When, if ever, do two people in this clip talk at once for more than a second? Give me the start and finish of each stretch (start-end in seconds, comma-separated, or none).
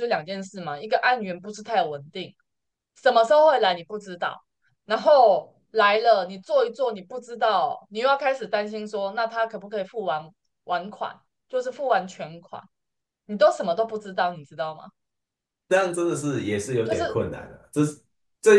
none